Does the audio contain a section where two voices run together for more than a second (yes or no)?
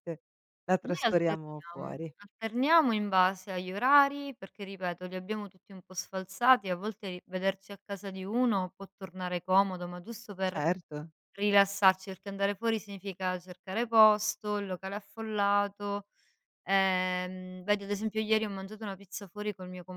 yes